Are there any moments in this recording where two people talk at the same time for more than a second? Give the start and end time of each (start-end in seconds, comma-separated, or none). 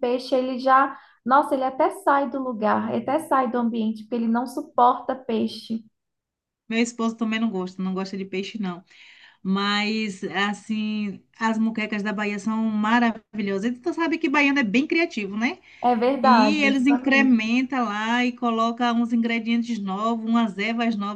16.2-17.5